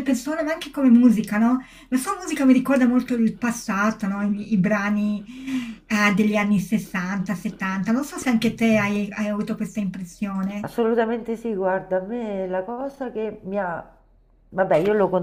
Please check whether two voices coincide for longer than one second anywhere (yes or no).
no